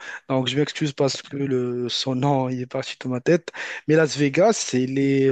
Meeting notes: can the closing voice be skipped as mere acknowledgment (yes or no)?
yes